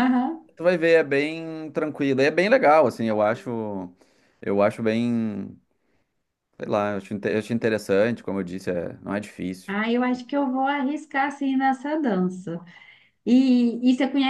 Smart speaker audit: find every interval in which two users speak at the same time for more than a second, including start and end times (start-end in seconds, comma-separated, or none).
none